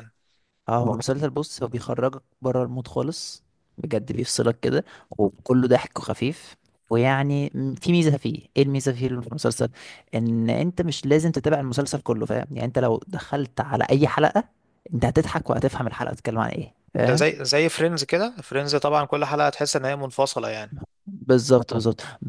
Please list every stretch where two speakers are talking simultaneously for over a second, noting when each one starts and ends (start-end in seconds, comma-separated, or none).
none